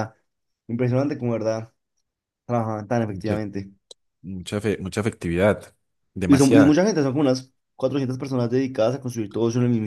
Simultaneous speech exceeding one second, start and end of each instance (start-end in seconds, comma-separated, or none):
none